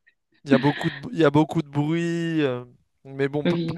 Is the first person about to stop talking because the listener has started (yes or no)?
no